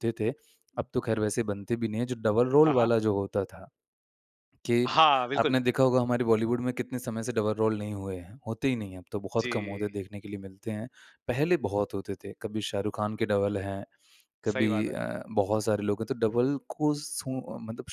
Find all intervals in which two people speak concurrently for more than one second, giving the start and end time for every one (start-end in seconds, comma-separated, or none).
none